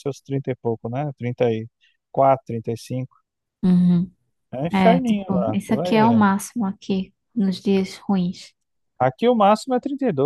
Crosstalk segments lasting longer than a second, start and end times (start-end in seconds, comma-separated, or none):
4.7-6.2